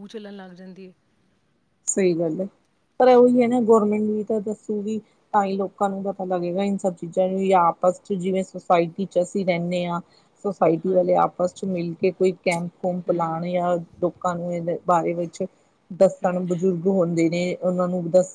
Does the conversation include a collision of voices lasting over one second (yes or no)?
no